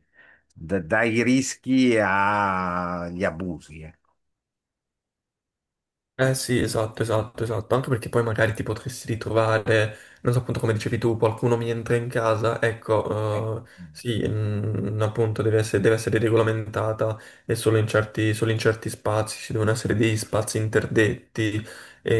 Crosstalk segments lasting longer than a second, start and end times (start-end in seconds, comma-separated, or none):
none